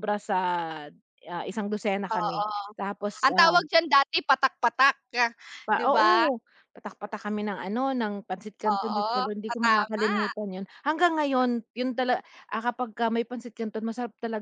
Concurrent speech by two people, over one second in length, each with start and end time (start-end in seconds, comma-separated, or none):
8.7-10.1